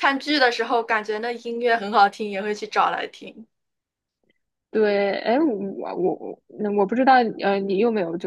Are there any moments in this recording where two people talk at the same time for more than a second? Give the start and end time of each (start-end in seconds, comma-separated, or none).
none